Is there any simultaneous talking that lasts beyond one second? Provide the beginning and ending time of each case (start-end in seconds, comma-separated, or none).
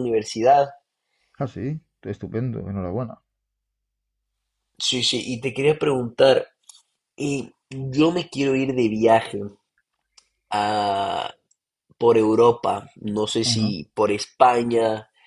none